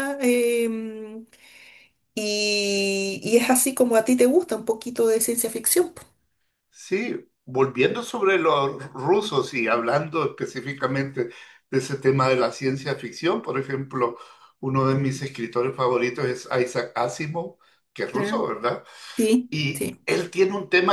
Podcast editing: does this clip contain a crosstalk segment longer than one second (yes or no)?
no